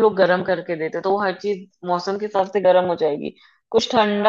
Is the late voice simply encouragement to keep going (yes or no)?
yes